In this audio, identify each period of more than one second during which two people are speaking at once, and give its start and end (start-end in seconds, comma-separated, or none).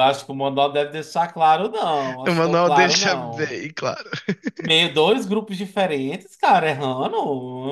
2.3-3.6